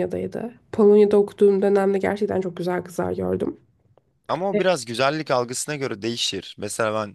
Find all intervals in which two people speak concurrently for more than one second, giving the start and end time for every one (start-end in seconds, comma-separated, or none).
none